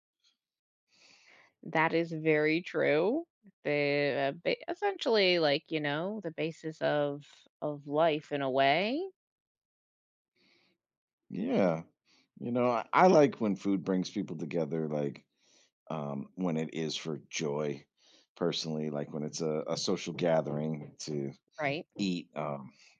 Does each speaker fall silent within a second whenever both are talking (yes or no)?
yes